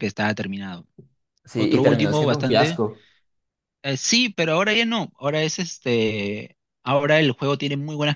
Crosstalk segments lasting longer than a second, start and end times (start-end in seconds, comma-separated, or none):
1.6-2.8